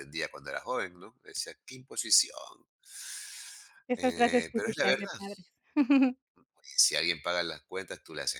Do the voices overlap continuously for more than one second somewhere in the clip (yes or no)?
yes